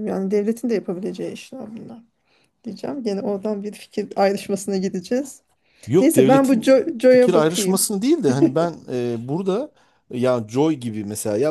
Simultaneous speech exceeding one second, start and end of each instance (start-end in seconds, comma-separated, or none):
6.0-7.9